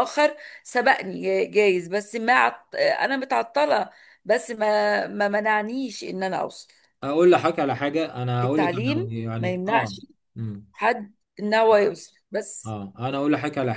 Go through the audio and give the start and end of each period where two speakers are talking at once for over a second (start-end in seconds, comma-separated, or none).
8.4-9.9